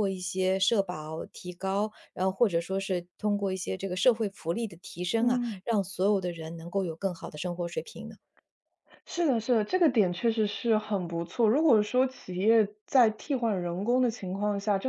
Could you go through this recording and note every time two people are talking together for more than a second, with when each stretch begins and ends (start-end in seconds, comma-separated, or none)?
none